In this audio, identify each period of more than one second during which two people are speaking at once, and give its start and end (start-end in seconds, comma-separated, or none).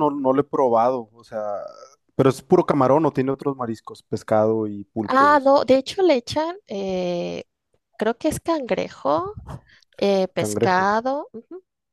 none